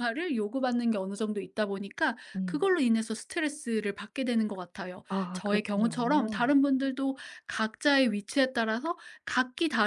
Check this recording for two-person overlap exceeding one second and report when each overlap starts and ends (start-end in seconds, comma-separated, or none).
5.1-6.5